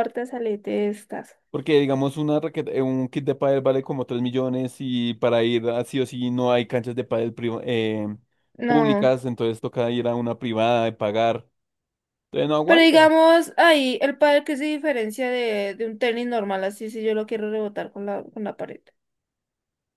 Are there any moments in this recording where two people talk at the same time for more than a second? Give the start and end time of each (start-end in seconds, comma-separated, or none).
none